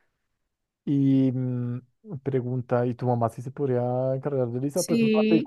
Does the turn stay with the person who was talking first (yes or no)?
no